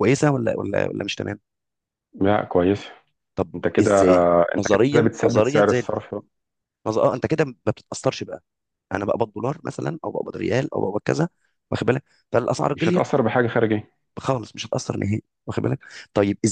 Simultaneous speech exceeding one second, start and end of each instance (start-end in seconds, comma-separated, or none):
3.5-5.9